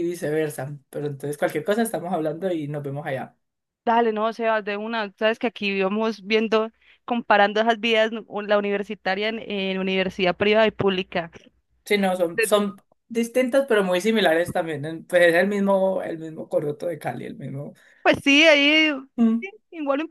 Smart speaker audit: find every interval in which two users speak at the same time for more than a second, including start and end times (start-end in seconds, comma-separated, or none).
none